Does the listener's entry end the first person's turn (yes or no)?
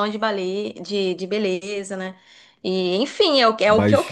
no